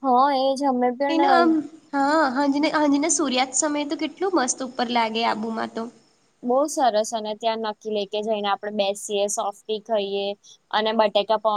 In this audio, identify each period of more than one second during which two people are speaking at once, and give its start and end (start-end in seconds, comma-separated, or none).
none